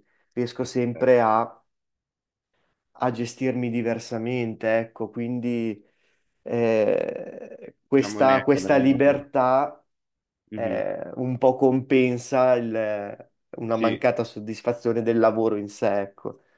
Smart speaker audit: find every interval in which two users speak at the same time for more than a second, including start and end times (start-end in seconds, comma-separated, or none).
7.9-9.3